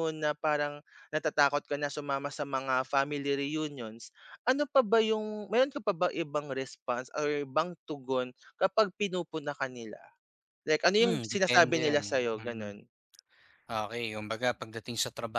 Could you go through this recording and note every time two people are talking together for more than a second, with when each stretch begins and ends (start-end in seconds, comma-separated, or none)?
11.0-12.7